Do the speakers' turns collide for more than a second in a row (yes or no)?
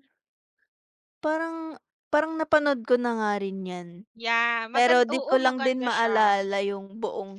yes